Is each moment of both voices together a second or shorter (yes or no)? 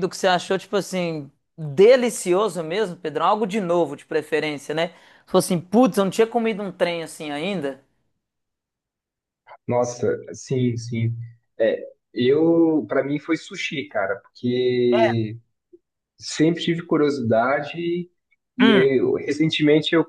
yes